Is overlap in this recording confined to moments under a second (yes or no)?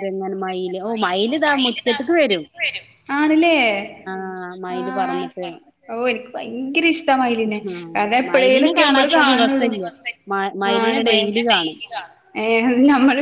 no